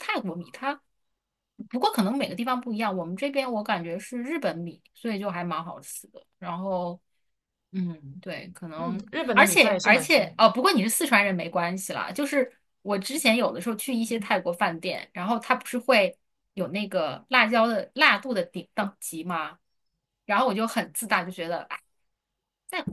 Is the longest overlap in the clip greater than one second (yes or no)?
yes